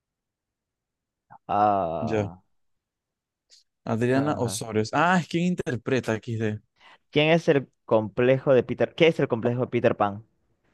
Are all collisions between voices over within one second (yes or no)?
yes